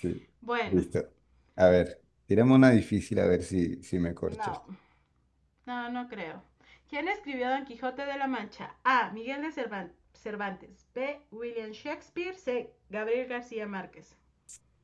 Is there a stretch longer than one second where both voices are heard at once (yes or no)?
no